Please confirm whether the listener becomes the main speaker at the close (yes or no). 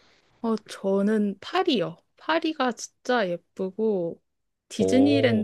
no